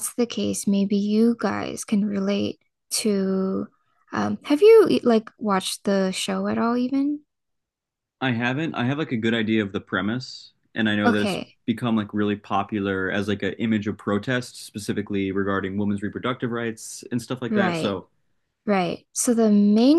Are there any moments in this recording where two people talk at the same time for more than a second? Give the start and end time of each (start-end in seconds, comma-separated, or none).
none